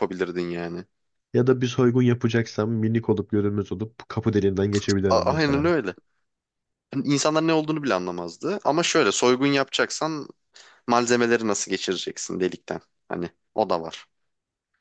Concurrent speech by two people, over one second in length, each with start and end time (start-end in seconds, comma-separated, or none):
none